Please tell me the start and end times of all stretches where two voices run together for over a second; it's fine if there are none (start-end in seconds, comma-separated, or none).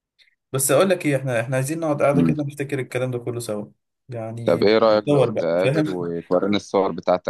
4.4-6.1